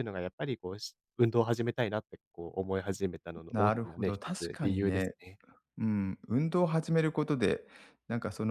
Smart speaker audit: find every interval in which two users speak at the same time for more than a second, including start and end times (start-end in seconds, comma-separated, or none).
3.5-5.2